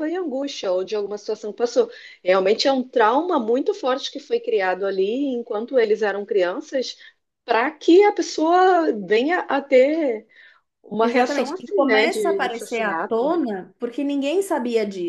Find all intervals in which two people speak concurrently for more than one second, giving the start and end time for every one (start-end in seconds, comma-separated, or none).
11.0-13.3